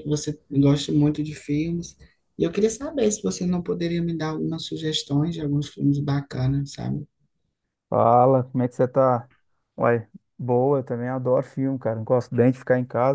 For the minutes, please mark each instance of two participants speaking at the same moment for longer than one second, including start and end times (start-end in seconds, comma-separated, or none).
none